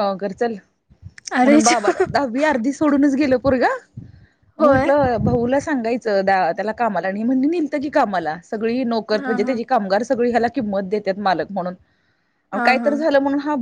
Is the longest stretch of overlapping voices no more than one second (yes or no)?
yes